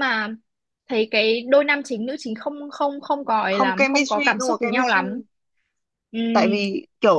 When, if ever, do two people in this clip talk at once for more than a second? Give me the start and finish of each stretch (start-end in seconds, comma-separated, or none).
3.5-5.0